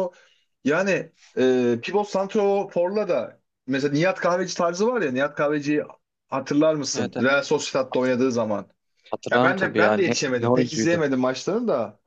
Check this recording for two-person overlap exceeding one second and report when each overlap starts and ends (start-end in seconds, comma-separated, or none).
9.3-11.0